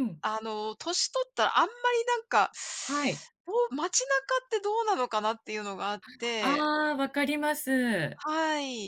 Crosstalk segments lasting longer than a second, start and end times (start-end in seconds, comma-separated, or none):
none